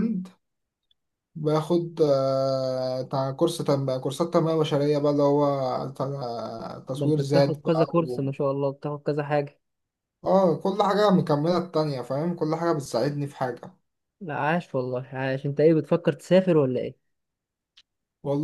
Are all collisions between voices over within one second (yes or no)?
no